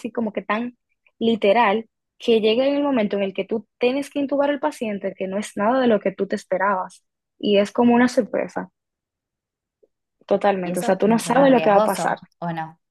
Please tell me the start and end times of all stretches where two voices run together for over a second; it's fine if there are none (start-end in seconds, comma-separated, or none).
10.6-12.2